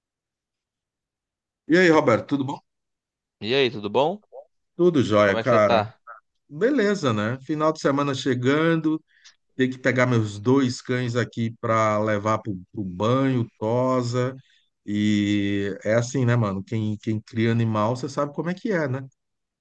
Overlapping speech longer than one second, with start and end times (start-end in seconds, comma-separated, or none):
none